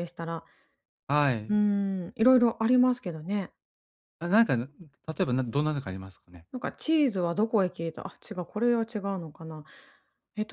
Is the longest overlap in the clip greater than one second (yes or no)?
no